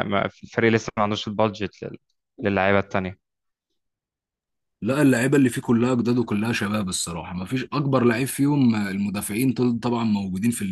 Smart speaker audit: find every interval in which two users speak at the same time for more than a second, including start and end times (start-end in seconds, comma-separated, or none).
none